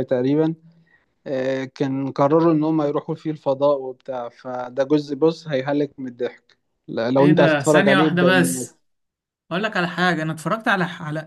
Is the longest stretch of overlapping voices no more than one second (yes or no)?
no